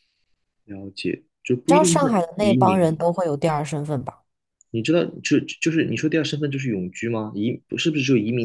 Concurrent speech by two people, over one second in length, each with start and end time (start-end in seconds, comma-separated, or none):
1.7-3.0